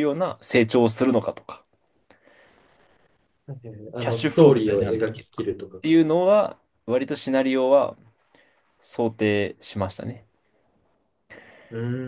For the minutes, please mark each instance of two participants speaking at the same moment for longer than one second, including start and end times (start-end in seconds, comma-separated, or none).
4.0-6.0